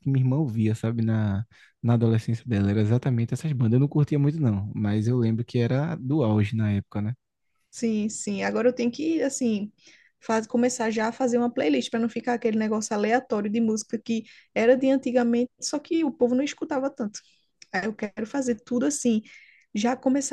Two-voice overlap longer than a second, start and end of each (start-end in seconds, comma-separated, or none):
none